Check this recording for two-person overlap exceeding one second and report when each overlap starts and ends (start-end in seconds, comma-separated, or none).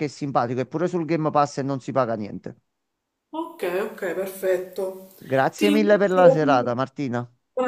5.5-6.8